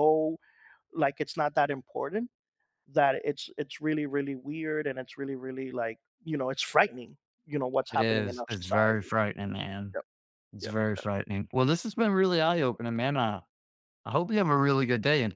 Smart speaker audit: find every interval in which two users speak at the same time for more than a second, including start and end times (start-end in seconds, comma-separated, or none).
7.9-9.1